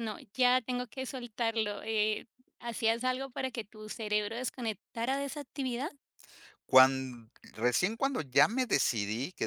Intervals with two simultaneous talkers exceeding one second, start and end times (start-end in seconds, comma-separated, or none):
none